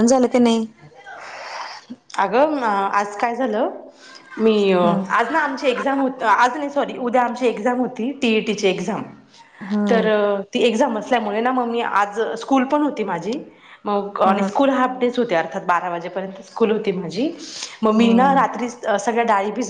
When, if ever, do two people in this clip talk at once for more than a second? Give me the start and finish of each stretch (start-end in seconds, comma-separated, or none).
none